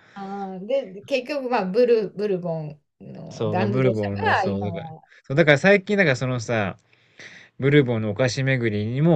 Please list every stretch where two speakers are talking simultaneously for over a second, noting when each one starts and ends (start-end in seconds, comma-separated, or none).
3.3-4.8